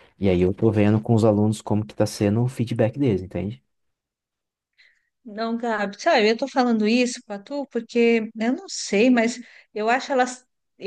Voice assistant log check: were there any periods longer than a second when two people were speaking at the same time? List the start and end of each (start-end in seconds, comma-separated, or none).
none